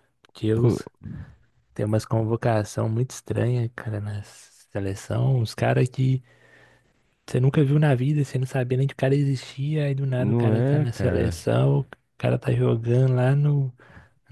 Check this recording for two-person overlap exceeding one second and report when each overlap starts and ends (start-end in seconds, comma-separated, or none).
10.2-11.5